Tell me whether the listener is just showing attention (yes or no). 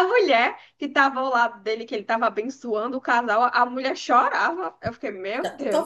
no